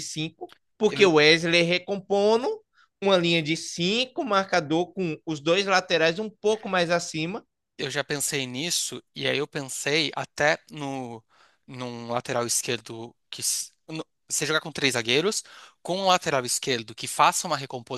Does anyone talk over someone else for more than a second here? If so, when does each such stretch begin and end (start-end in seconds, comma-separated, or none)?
none